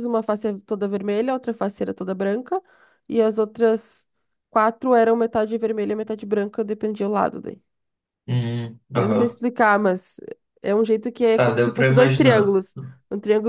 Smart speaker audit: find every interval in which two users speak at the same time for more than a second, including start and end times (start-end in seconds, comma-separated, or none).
11.3-12.6